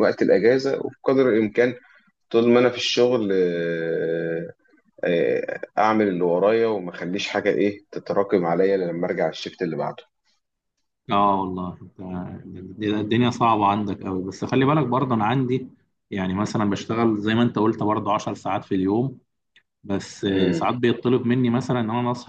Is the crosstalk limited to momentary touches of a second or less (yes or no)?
yes